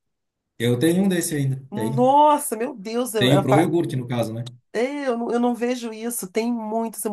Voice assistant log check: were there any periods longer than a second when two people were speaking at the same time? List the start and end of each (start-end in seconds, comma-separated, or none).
none